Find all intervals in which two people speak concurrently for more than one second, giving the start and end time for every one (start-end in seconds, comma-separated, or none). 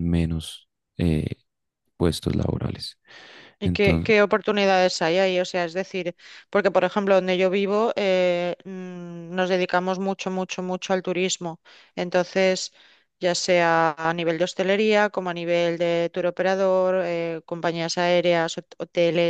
none